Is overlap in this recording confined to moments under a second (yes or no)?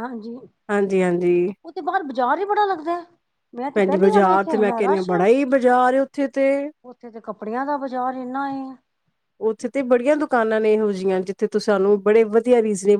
no